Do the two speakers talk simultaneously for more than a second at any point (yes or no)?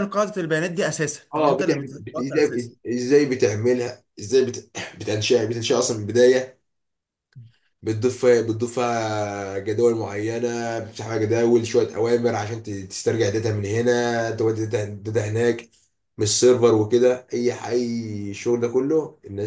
yes